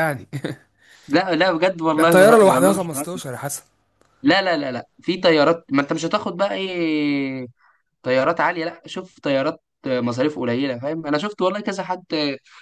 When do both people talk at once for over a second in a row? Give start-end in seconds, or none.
1.9-3.2